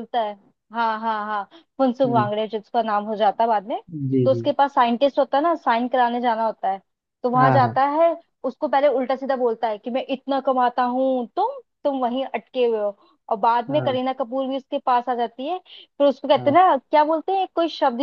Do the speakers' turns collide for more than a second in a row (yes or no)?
no